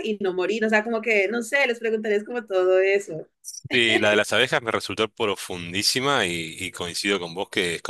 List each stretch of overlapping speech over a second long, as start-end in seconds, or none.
none